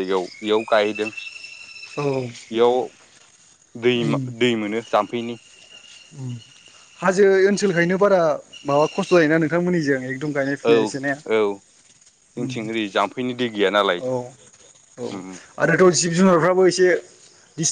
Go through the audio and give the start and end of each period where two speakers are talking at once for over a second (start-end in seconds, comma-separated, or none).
none